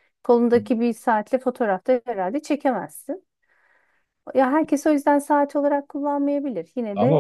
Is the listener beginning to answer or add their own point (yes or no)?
yes